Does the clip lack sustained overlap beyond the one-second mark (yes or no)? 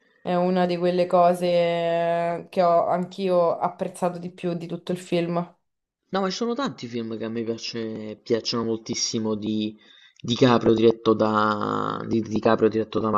yes